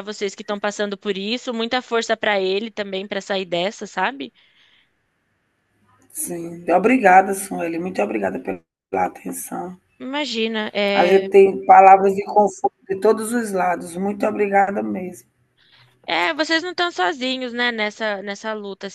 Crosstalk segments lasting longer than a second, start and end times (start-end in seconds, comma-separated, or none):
none